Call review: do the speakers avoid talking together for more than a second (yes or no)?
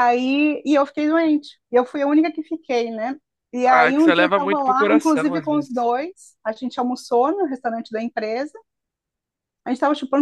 no